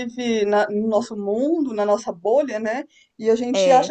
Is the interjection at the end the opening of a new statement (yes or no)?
no